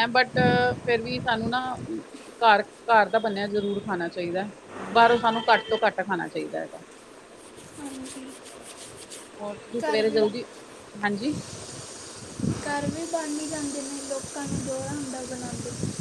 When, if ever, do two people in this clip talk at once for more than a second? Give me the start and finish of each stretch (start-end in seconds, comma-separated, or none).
none